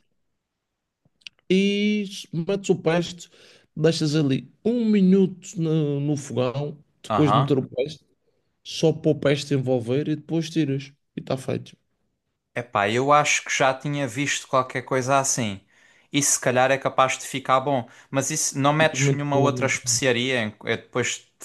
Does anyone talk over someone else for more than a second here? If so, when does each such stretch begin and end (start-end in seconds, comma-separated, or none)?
18.8-20.0